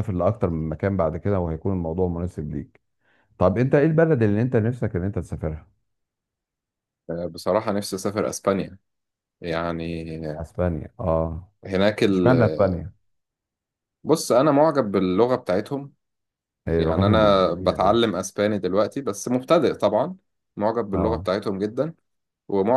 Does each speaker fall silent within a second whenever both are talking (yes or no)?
no